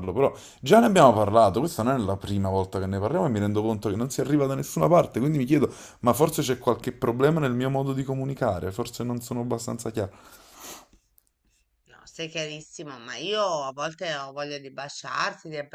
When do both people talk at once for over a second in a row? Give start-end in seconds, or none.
none